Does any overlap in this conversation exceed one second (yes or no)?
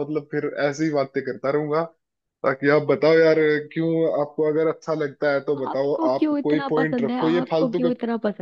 yes